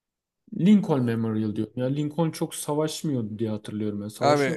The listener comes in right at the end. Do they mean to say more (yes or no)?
yes